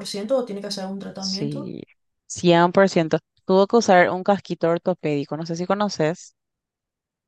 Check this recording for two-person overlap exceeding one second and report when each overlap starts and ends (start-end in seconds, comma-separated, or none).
none